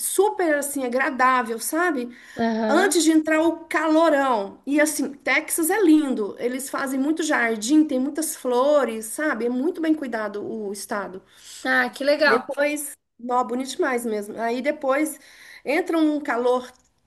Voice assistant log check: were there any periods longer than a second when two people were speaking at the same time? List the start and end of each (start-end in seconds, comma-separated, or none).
none